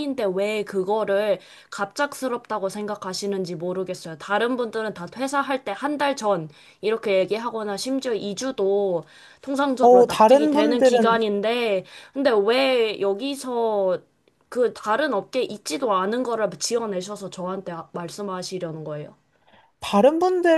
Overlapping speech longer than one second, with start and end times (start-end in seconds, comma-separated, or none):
9.8-11.2